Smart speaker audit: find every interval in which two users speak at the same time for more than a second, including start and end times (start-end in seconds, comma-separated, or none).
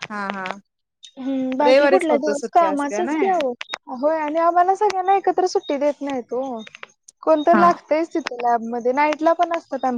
1.7-3.3